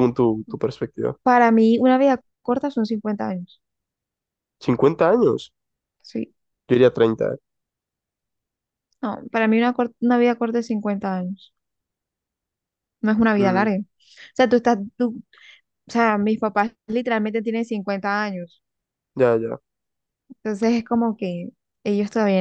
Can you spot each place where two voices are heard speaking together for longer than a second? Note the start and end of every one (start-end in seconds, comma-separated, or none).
none